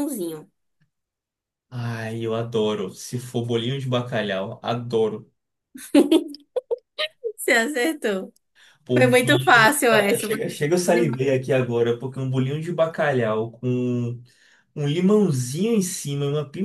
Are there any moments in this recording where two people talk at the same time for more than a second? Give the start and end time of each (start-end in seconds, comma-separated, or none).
9.0-10.6